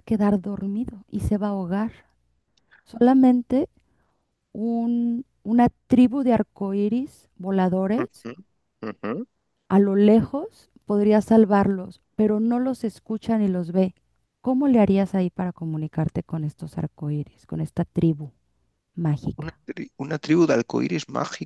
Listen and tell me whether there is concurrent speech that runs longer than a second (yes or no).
no